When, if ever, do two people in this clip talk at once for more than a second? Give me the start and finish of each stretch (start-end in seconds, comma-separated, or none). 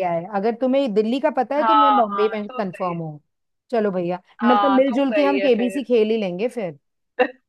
1.6-3.0, 4.4-5.9